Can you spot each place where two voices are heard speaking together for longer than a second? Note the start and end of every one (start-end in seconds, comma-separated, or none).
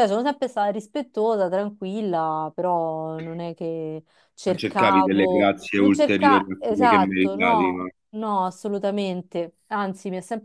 4.5-7.9